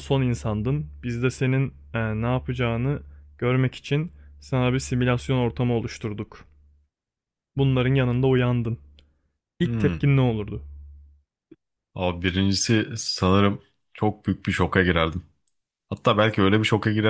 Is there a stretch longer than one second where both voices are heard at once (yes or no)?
no